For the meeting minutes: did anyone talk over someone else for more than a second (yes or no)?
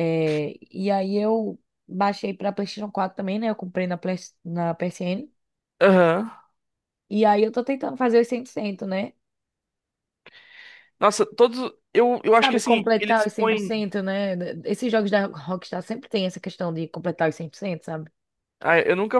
yes